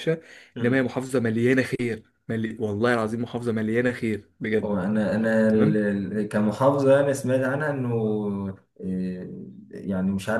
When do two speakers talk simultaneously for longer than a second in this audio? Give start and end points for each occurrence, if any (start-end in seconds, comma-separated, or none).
none